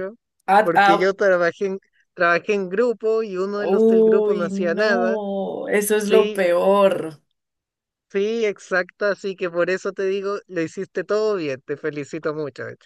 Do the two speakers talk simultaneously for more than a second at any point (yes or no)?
yes